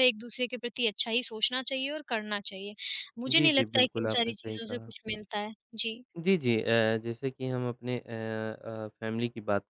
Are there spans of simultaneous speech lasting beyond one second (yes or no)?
yes